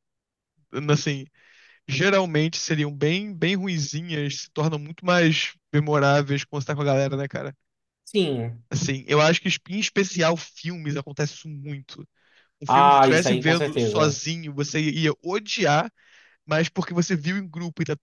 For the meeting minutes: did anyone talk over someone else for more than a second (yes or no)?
yes